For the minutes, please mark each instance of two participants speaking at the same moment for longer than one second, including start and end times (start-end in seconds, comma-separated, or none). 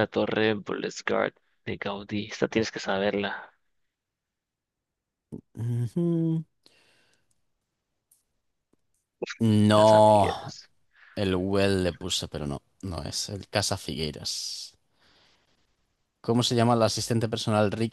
none